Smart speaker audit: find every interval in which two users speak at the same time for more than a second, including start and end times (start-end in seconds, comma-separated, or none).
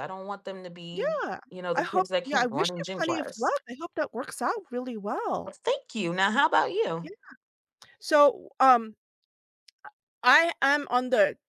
0.9-3.5